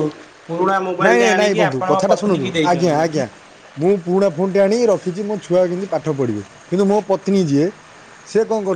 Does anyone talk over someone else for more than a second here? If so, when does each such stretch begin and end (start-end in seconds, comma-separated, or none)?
1.1-3.0